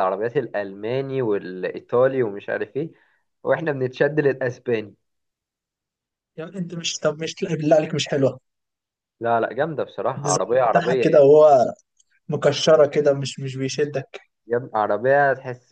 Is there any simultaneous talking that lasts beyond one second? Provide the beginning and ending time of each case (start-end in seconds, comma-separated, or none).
10.2-11.4